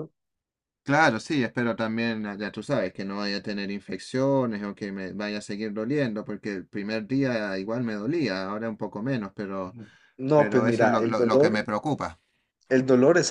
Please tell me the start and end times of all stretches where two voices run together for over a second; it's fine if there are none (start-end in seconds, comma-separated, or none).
10.3-11.7